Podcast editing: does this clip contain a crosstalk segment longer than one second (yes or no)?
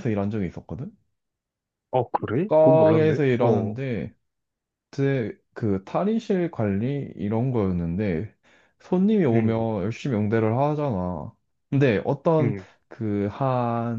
yes